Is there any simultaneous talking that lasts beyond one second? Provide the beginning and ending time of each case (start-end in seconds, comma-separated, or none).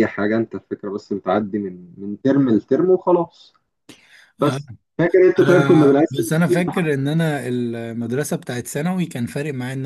5.4-6.9